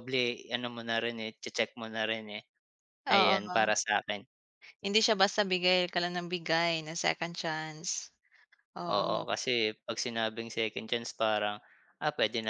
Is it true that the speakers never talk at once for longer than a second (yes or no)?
yes